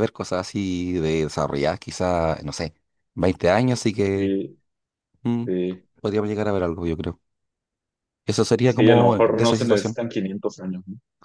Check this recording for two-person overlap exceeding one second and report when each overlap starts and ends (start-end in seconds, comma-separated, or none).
8.6-10.0